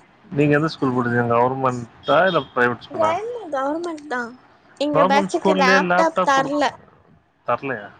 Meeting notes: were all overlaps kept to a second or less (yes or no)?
no